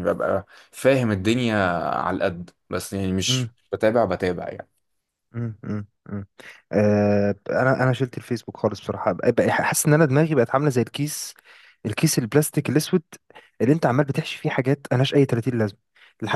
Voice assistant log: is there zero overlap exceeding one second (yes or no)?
yes